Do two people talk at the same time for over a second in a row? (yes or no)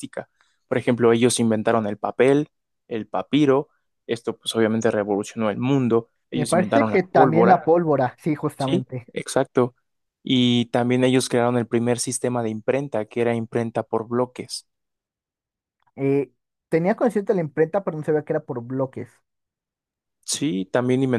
yes